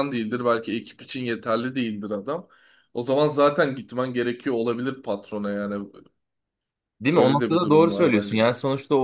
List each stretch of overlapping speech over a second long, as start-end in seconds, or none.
7.1-8.4